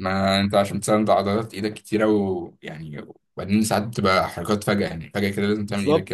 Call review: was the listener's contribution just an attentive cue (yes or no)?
no